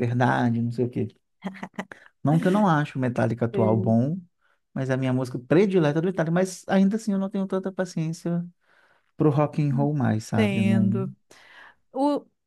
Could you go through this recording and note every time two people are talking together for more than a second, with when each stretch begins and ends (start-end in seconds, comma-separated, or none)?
9.7-11.0